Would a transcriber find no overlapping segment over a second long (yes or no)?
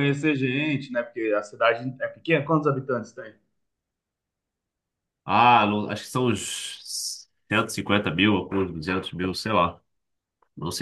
yes